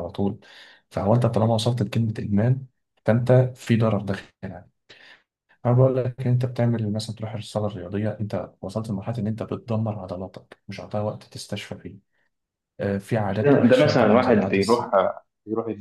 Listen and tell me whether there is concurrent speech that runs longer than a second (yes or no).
yes